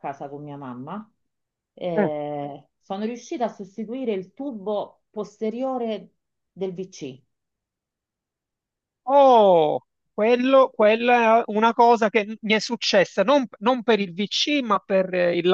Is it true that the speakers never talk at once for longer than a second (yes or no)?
yes